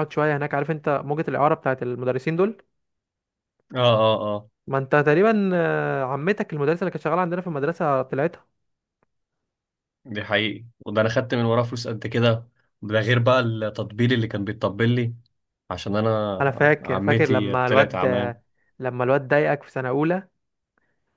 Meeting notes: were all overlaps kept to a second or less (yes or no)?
no